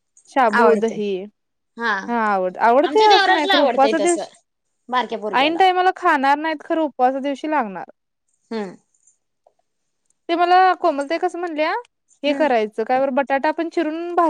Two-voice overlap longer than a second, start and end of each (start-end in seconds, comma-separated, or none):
2.9-4.2